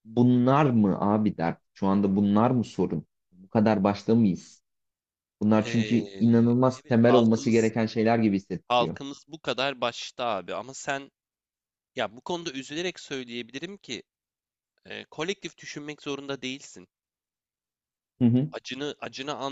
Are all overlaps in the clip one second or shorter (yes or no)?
no